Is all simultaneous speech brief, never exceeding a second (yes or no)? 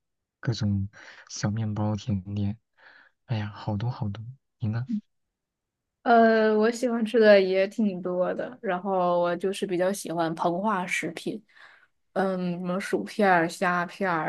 yes